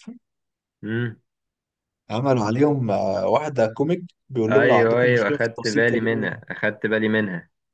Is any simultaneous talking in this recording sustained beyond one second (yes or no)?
yes